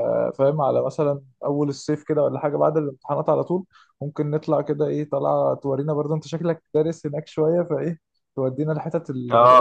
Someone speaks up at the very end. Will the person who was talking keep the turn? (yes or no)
no